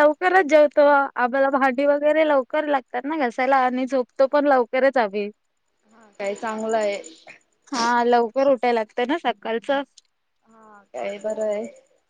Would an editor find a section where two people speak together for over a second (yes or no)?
no